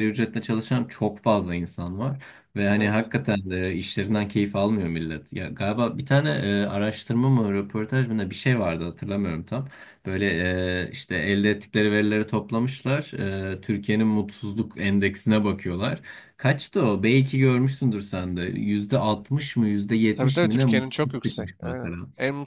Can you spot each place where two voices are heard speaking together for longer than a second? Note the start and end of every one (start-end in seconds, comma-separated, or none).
20.1-22.0